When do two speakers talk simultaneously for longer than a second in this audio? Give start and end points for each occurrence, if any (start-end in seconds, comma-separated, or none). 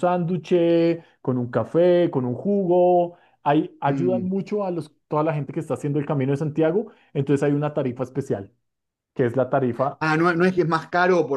none